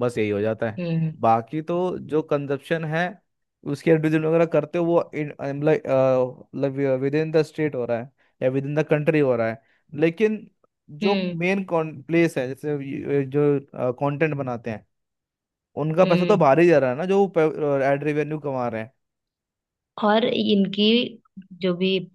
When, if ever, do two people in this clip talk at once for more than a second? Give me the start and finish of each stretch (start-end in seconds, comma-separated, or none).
none